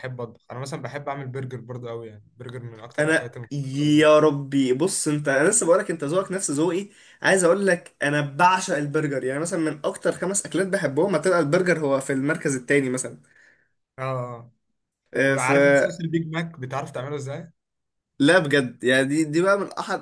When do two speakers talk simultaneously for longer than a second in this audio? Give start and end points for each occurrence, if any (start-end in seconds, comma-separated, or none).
3.0-4.4